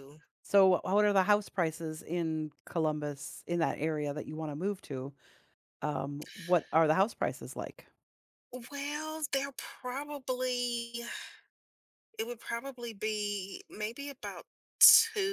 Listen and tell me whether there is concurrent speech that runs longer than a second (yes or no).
no